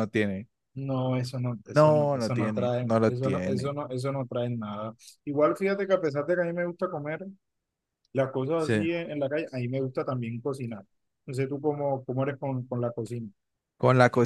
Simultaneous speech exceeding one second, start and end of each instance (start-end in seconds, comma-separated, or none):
1.7-3.7